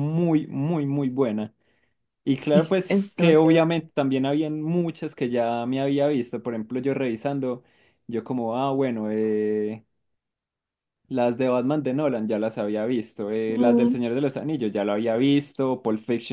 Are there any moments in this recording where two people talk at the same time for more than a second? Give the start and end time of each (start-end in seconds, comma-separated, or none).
2.3-3.7